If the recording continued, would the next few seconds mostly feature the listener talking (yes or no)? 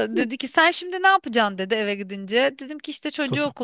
no